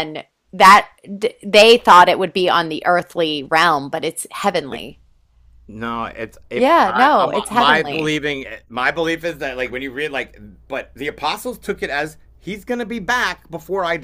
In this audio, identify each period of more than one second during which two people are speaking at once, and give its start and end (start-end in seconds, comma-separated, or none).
6.5-8.1